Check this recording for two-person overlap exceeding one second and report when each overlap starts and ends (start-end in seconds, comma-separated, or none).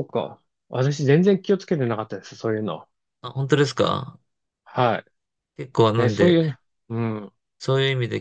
none